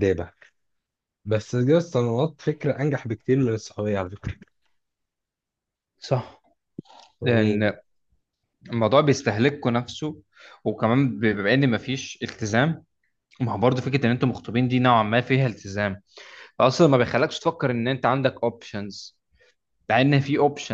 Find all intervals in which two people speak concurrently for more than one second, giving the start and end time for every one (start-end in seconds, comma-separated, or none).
none